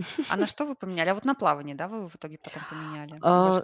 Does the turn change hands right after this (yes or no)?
yes